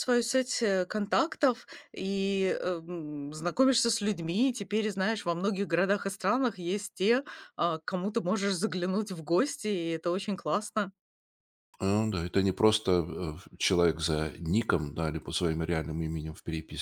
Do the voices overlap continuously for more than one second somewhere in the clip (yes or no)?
no